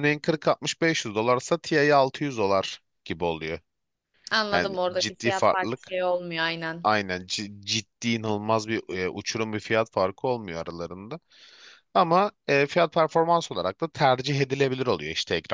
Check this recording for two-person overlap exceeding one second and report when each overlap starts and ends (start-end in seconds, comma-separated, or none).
4.5-6.0